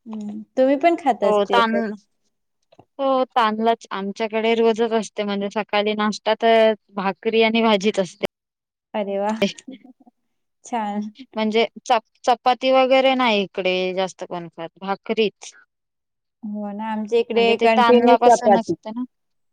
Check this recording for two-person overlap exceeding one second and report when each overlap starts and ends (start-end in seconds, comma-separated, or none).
17.3-18.7